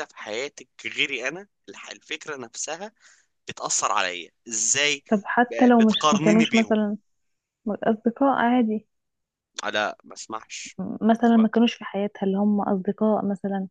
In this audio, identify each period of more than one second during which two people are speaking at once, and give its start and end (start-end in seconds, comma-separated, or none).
5.5-6.8